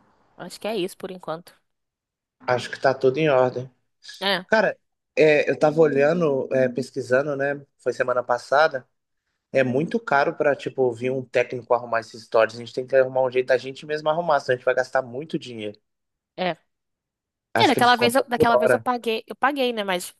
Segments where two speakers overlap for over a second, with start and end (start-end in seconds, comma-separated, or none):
17.6-18.8